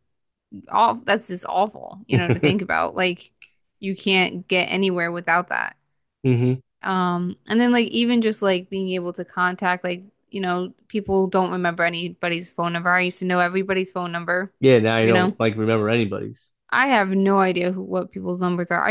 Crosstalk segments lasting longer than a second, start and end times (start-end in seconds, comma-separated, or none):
none